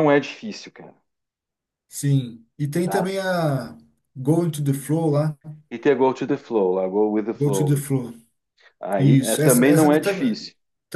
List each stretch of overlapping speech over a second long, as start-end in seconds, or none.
9.0-10.4